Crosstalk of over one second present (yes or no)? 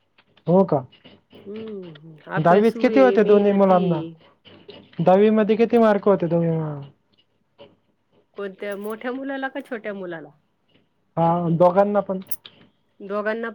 yes